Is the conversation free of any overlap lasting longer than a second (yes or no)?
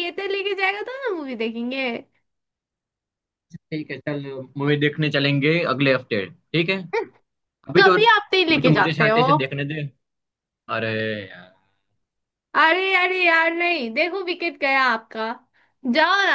no